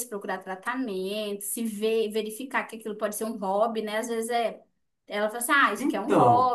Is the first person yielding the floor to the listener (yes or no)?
no